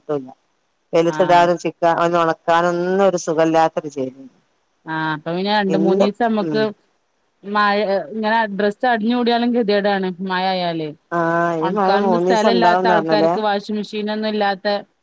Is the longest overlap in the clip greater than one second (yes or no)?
yes